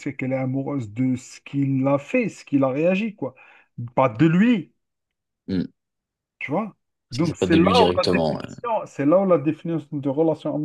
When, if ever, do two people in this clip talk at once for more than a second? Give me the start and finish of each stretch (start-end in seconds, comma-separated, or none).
7.1-8.4